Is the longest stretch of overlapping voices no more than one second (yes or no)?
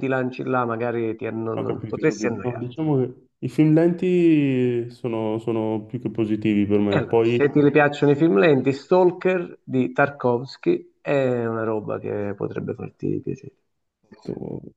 no